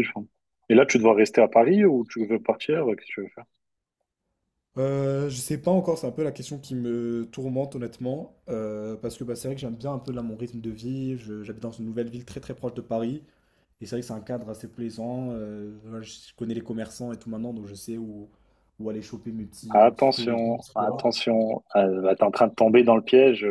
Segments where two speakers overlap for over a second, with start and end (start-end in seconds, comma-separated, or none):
19.7-21.1